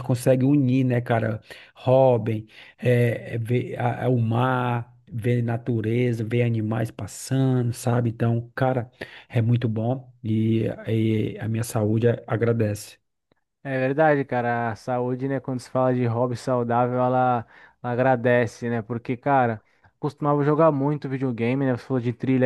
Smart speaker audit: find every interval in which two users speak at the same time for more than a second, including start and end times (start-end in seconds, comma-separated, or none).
none